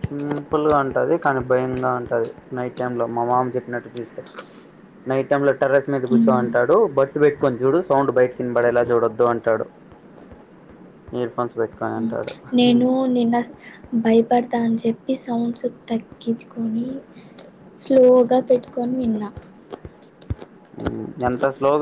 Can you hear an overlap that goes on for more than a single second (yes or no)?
no